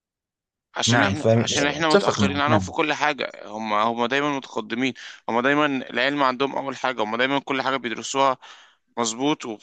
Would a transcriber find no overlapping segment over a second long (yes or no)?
no